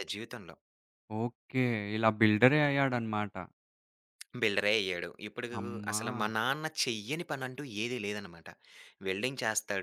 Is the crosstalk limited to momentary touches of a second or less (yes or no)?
yes